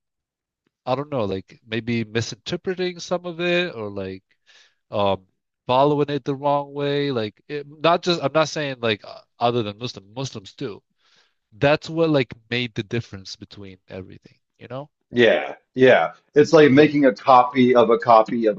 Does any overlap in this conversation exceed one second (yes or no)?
no